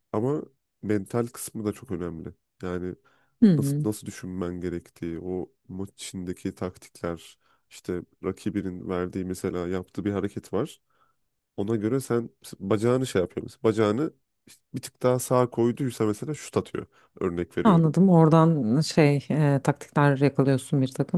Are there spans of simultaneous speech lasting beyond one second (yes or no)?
no